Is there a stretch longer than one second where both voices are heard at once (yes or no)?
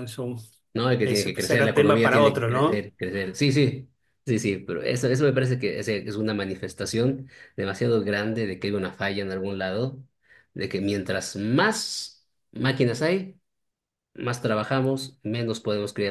yes